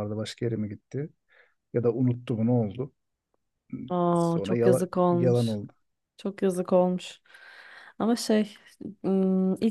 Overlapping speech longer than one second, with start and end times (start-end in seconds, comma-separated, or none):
4.1-5.6